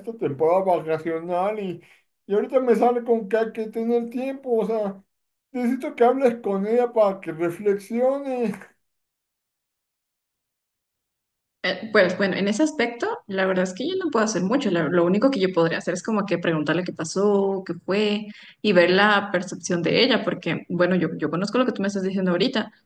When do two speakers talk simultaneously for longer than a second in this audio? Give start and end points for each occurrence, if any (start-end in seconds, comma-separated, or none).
none